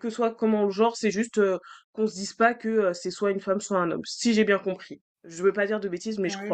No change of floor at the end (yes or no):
no